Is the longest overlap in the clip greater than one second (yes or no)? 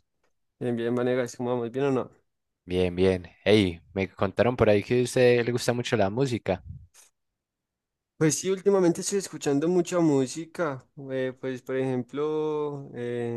no